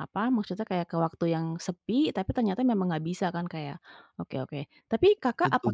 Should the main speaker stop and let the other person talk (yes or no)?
no